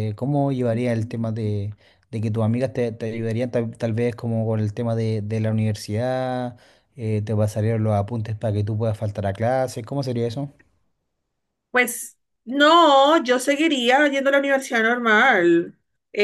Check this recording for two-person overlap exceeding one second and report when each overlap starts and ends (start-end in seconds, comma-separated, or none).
none